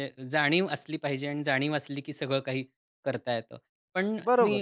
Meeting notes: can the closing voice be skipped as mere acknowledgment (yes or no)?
yes